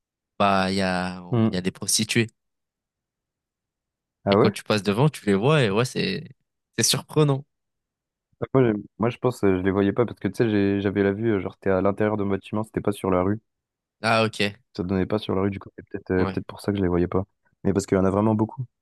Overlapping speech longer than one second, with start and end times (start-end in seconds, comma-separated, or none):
none